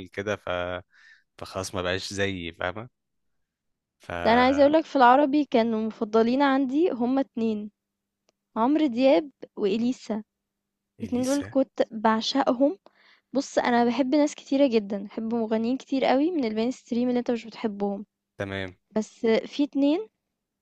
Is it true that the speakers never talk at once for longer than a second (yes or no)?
yes